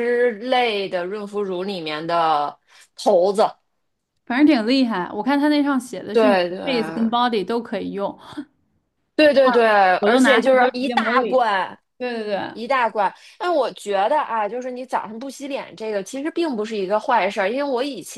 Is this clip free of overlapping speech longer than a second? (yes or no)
no